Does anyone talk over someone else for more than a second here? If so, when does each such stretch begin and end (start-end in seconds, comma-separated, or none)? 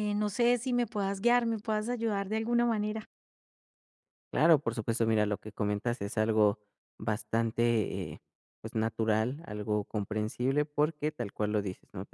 none